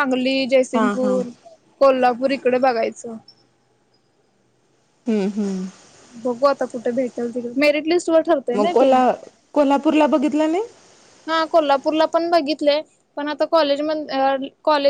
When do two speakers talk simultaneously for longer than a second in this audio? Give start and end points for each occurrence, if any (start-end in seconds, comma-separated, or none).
none